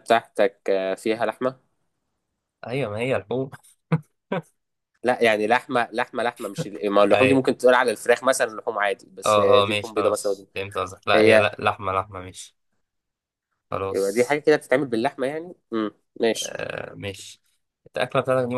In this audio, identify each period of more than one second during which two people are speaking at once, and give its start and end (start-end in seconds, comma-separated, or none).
9.2-10.5